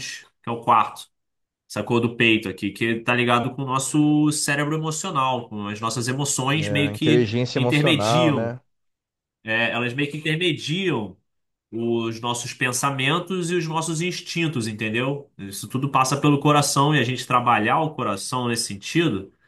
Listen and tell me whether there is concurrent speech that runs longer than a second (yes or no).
yes